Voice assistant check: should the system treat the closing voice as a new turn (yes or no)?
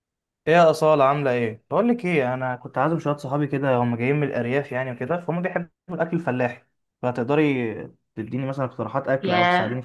yes